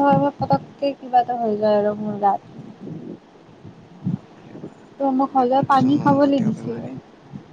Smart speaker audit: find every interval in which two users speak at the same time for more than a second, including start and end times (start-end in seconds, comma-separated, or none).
5.0-6.8